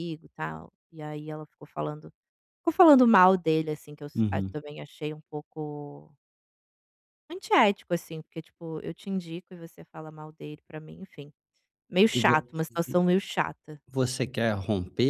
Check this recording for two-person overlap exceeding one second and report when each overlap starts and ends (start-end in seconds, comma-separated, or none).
none